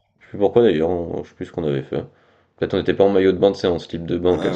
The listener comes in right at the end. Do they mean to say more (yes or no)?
yes